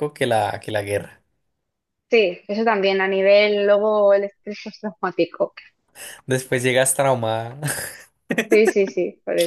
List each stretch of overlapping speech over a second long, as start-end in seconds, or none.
none